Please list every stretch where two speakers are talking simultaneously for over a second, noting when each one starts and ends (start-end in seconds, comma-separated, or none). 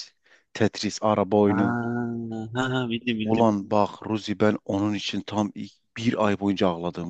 none